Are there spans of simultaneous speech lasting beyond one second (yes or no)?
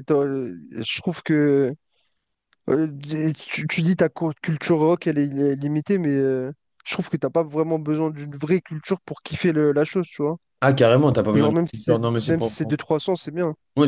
yes